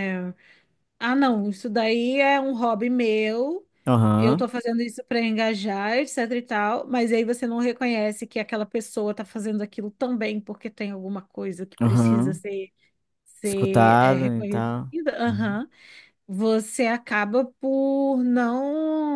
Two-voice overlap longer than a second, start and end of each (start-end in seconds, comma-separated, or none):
13.4-15.6